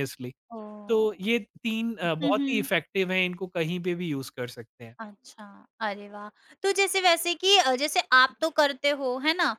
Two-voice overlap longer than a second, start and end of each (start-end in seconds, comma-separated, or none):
none